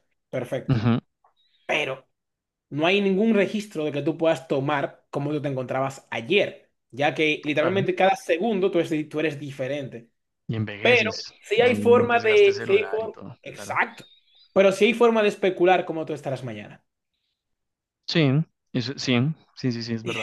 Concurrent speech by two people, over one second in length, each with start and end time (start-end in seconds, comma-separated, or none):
10.8-13.8